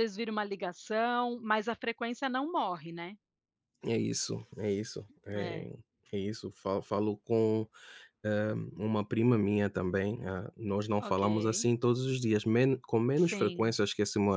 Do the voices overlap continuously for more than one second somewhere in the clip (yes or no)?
no